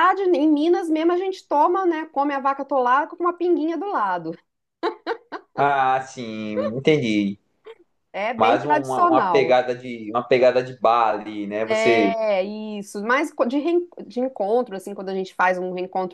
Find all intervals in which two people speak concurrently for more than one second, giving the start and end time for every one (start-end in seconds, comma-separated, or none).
8.4-9.6